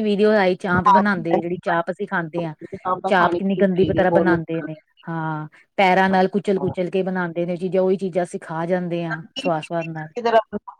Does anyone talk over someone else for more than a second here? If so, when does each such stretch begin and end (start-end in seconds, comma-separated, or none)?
3.1-4.7